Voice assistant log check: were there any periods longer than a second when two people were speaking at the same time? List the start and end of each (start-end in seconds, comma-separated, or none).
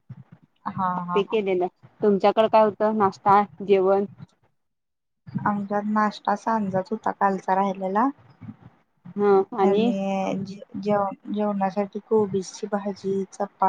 none